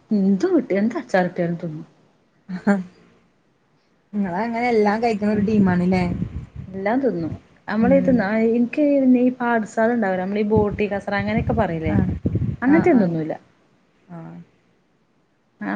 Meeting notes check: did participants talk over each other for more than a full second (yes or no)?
no